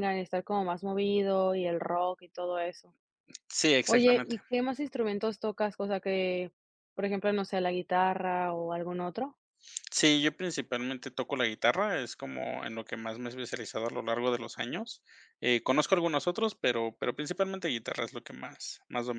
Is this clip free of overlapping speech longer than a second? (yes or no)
yes